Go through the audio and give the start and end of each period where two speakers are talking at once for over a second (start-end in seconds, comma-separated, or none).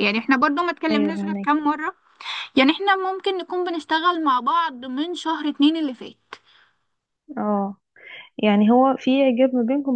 none